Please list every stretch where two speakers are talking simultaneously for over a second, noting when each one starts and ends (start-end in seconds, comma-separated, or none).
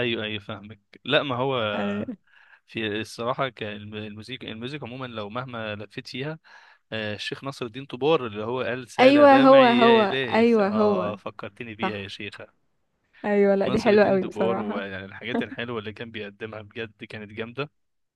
9.0-11.2, 13.6-14.9